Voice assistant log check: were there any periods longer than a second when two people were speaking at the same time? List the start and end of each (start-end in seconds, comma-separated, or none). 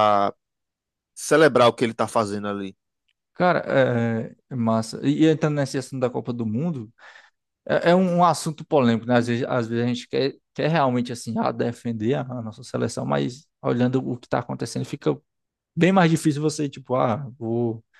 none